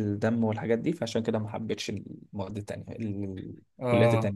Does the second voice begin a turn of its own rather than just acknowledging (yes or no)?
yes